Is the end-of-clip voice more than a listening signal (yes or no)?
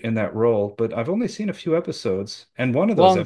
no